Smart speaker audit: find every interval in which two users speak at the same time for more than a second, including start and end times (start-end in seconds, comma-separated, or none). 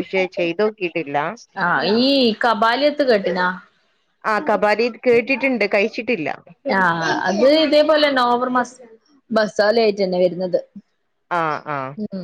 none